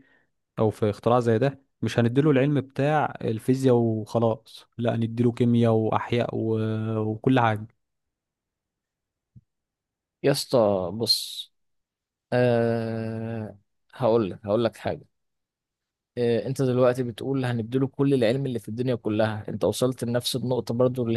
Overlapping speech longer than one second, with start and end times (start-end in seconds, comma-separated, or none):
none